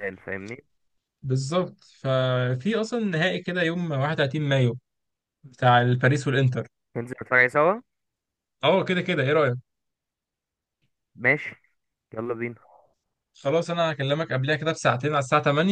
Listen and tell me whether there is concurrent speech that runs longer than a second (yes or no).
no